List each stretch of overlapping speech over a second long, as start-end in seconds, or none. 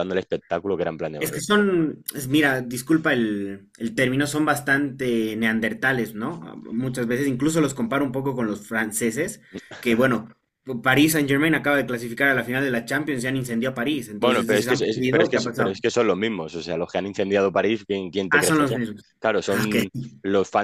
14.2-15.7